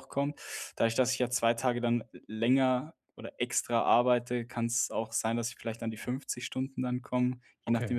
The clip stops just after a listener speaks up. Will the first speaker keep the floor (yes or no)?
yes